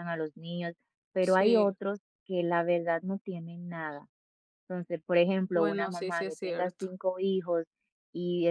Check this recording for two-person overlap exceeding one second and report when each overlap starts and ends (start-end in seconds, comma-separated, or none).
5.5-6.8